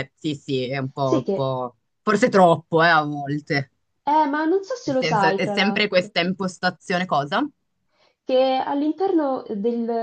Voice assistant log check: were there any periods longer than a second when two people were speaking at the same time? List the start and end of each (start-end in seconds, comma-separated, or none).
4.8-6.1